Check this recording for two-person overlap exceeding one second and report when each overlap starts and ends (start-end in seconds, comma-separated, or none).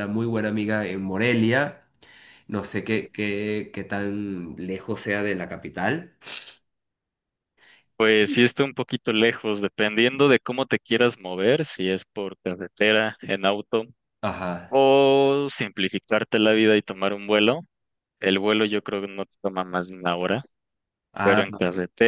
none